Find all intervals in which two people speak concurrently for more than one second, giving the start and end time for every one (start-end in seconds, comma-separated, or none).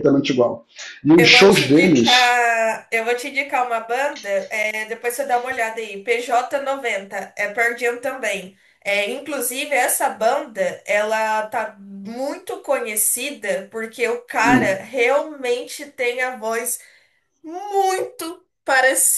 1.2-2.4